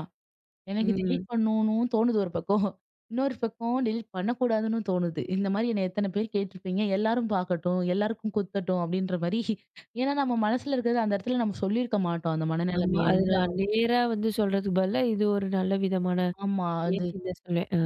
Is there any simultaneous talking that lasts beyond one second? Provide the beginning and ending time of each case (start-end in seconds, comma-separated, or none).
none